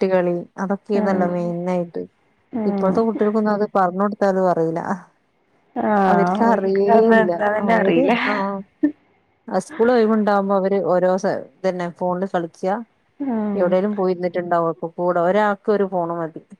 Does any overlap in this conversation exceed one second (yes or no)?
yes